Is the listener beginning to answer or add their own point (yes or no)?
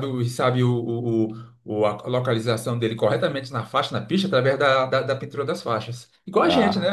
yes